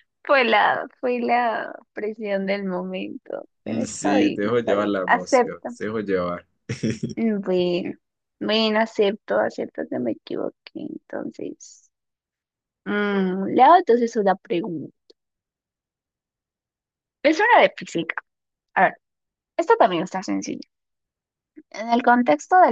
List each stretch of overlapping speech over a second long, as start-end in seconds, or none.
3.6-5.7